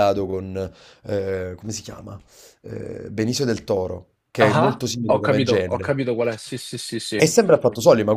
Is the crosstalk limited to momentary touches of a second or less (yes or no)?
no